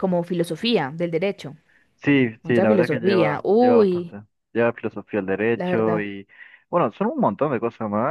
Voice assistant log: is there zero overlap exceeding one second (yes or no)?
no